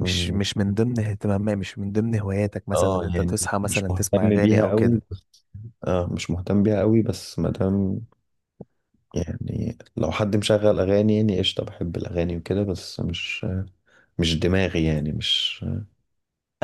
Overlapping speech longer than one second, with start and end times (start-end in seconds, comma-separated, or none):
2.7-5.0